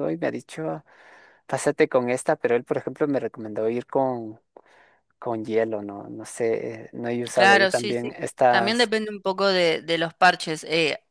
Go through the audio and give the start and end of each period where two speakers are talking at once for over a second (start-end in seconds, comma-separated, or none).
7.3-8.9